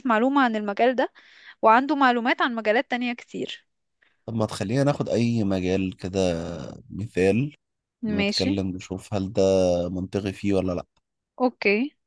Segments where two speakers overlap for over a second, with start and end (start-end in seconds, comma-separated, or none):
none